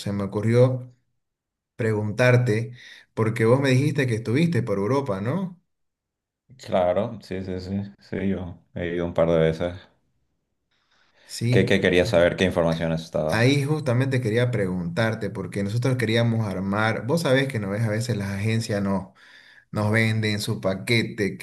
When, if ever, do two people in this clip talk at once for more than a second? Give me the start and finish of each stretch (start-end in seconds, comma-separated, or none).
none